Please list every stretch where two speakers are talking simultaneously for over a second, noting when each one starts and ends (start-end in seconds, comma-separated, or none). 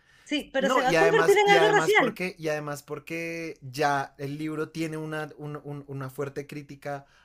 0.6-2.1